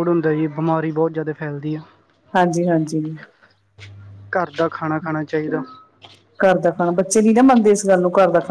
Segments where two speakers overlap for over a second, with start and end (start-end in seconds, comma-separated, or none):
none